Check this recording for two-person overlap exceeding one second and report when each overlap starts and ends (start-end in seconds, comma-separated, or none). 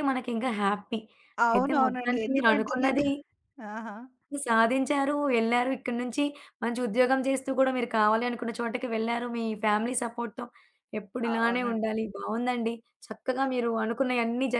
1.5-3.0